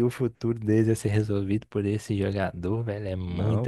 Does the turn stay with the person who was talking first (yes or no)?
no